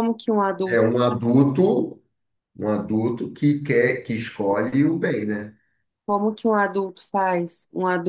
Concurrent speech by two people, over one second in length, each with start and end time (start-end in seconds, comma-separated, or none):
none